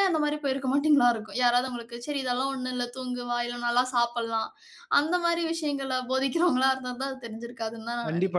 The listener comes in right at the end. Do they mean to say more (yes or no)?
yes